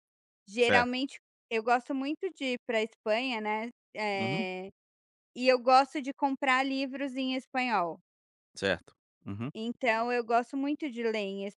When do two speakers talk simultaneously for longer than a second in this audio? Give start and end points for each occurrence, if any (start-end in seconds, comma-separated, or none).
none